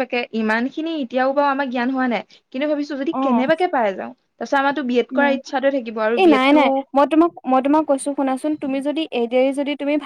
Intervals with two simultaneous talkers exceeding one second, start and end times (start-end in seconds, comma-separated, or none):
none